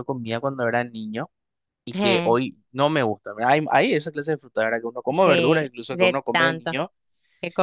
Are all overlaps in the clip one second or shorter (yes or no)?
no